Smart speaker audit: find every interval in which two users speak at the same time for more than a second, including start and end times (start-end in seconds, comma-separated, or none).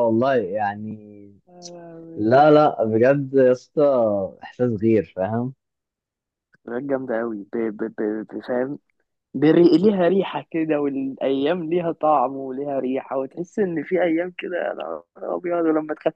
none